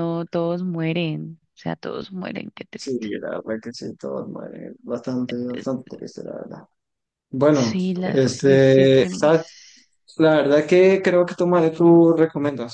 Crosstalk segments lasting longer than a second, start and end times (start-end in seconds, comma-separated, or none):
7.6-9.3